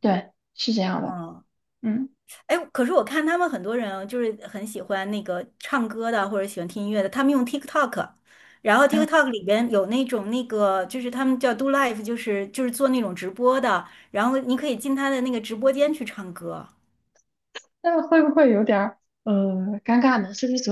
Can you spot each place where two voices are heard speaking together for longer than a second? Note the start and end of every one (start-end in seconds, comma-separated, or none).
none